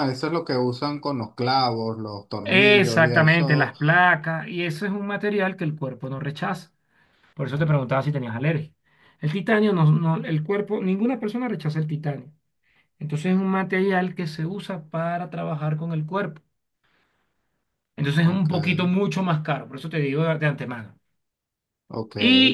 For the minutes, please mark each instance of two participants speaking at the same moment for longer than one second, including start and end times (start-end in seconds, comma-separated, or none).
2.4-3.7